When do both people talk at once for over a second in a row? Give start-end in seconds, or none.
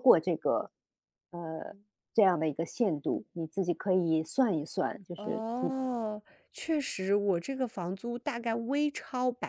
none